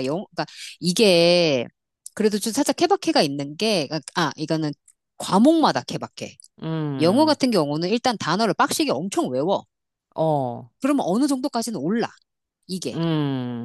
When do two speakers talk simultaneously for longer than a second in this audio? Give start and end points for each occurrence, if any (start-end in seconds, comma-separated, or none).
none